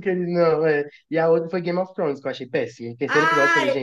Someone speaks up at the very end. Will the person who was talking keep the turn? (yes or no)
no